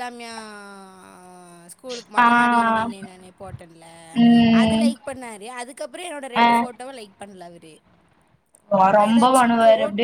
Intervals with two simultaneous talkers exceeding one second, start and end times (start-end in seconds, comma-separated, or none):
none